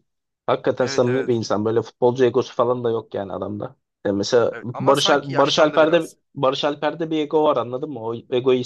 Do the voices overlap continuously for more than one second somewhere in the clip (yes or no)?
yes